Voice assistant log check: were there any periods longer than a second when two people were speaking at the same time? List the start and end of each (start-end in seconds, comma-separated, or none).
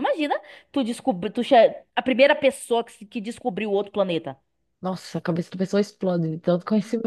none